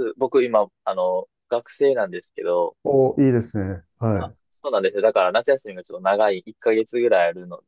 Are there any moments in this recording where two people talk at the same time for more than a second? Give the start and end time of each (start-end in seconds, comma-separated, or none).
none